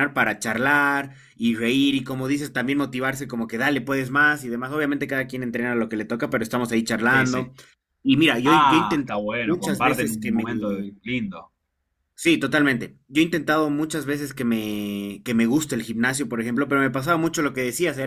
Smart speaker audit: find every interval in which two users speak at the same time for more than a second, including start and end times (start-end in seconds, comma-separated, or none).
8.4-10.5